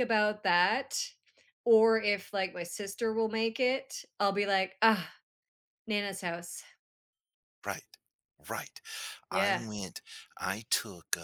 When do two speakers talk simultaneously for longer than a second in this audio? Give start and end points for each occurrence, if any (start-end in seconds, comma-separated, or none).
none